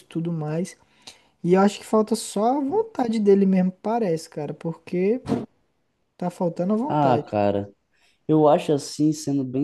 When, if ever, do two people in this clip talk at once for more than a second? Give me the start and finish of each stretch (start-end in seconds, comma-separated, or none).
none